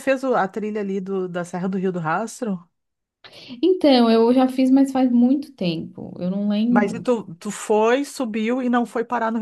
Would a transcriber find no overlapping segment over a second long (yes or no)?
yes